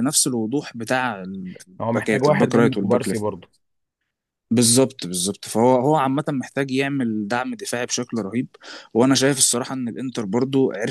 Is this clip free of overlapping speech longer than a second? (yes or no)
no